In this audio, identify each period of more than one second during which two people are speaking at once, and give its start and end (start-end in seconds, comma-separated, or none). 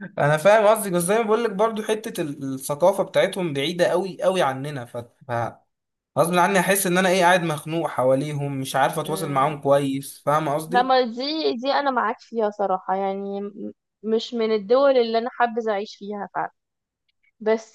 none